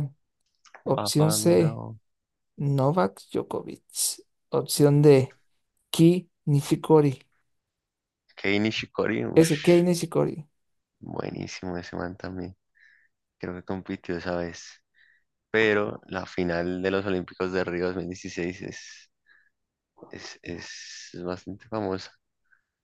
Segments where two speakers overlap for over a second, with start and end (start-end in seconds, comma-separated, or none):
none